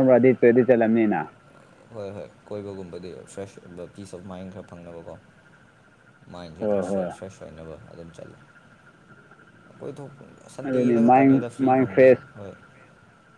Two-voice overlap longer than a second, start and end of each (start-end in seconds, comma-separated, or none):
10.7-12.2